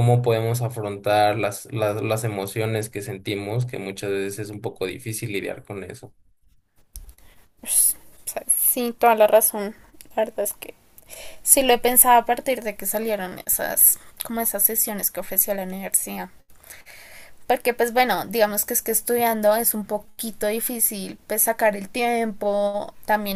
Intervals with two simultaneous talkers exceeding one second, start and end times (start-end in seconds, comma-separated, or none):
none